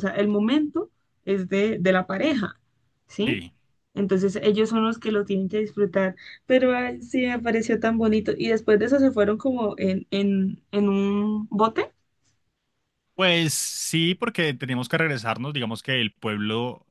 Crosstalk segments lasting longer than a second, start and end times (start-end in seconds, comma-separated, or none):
none